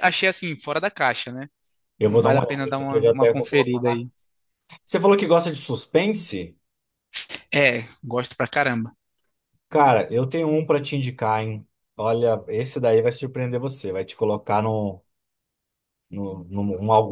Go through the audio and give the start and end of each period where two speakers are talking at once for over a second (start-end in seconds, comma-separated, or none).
2.1-4.1